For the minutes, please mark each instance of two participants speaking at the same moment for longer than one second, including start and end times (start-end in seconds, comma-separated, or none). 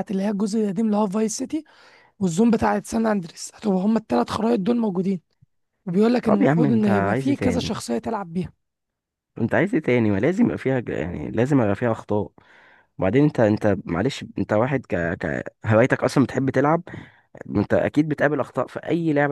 6.2-7.7